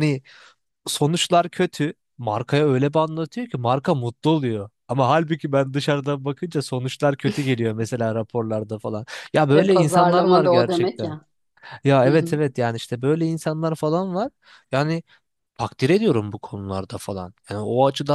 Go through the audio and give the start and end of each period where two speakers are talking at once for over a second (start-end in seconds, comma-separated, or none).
9.5-11.2